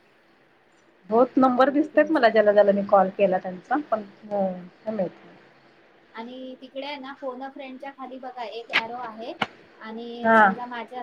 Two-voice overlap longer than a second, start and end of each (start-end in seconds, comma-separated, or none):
1.2-2.8